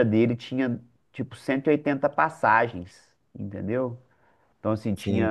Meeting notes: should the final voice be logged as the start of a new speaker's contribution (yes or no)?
no